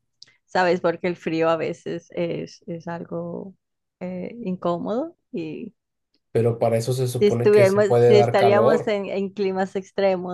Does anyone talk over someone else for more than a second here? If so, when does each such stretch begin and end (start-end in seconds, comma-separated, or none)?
7.2-8.9